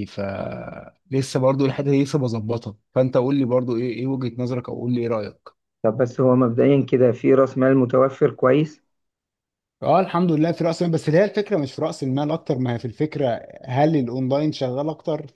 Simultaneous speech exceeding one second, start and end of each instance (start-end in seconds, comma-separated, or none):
none